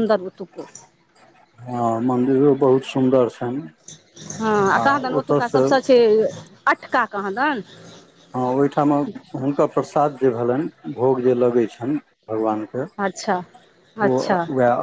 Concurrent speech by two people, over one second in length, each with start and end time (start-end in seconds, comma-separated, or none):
none